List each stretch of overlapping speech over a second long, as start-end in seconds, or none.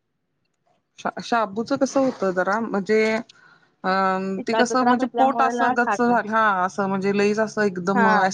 4.5-6.2